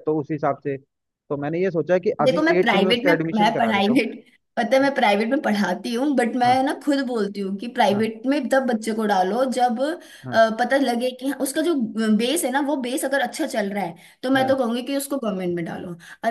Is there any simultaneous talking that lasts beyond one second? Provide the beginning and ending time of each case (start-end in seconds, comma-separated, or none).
2.2-4.0